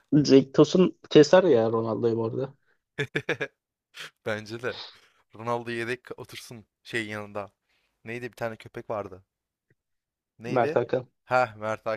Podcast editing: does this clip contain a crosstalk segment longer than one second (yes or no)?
no